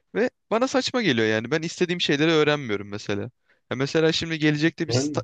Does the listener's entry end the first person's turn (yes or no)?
no